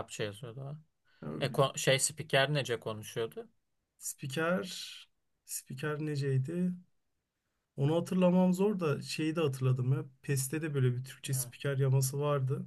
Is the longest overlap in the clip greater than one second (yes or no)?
no